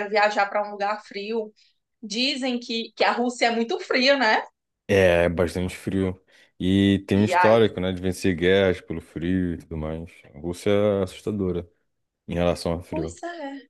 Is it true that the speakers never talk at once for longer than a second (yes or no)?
yes